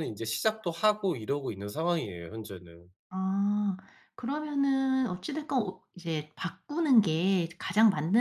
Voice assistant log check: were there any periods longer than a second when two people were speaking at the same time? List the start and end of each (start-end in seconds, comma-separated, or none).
none